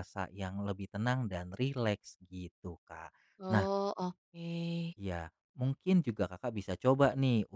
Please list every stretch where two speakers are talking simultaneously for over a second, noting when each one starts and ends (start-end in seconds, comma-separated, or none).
none